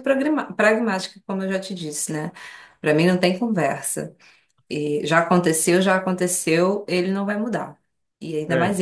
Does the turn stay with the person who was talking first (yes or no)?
yes